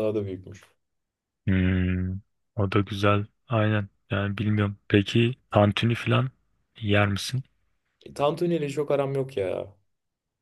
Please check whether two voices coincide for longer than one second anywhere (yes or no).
no